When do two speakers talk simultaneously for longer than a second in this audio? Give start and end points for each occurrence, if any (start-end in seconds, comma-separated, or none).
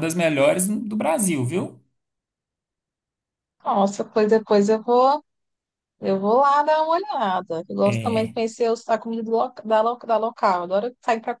none